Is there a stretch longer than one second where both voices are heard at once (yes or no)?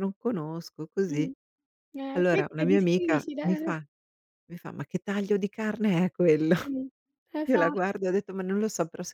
yes